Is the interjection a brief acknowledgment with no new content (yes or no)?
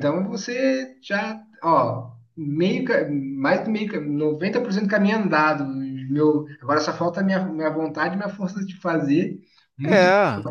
yes